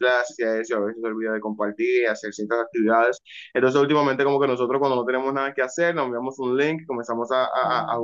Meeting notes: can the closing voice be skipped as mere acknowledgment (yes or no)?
yes